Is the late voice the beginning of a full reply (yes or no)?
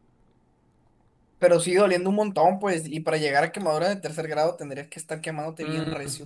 yes